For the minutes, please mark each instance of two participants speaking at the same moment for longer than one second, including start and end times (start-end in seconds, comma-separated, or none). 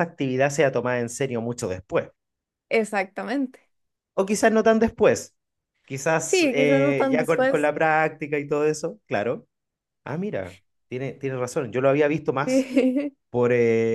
6.2-7.7